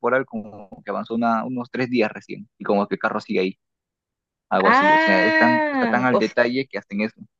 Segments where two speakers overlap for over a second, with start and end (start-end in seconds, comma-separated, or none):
4.6-6.2